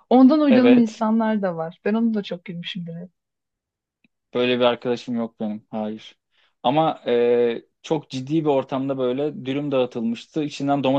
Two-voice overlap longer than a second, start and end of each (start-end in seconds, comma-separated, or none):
none